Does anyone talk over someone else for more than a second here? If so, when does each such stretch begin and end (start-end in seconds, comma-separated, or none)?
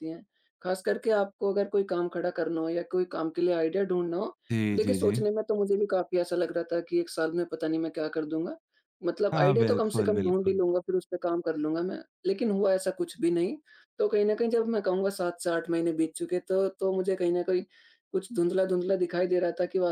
9.3-10.6